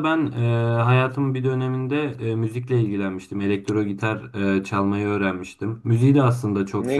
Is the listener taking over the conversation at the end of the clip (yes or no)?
no